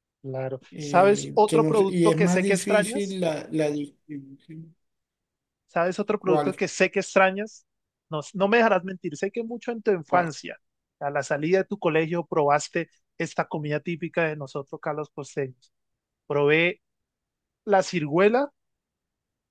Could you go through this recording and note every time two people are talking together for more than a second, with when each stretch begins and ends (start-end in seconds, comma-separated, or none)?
0.7-3.2